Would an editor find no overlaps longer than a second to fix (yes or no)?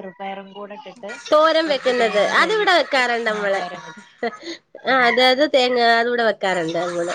no